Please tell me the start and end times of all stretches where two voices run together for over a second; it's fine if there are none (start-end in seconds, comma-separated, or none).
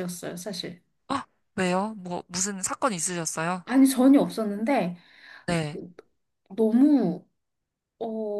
none